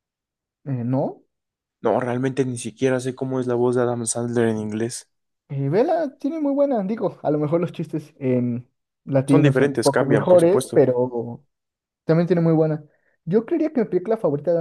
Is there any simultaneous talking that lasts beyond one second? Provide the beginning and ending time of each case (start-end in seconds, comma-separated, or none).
9.3-10.9